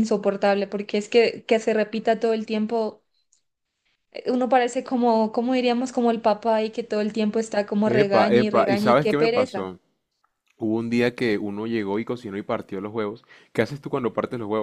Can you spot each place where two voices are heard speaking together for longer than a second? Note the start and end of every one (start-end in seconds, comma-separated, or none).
7.8-9.7